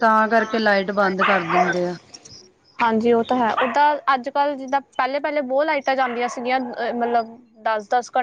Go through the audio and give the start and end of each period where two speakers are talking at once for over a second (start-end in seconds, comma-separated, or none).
none